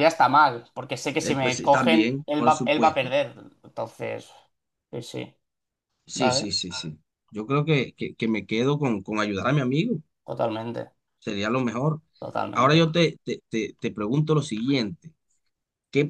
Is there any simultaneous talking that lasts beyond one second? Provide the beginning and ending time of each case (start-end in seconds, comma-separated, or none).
1.2-3.1